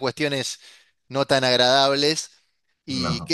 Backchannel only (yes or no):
yes